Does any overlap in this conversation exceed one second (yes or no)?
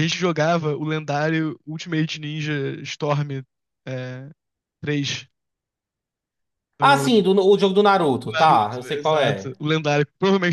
yes